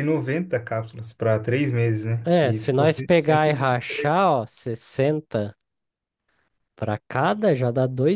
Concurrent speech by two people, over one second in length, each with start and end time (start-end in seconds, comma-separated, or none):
2.2-4.3